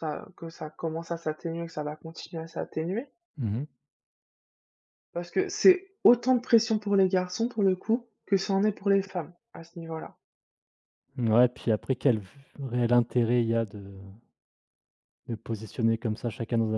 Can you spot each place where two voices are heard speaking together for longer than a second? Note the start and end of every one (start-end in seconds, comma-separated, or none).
none